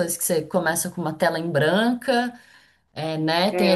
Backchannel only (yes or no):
yes